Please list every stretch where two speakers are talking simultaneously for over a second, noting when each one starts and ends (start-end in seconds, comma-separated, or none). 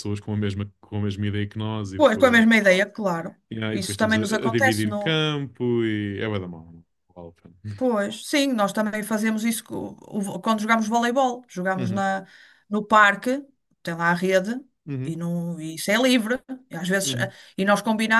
3.5-5.2